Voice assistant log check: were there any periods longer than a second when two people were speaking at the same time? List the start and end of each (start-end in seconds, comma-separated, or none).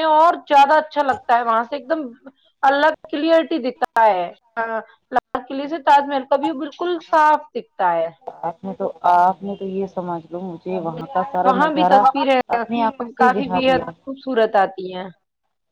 5.7-7.1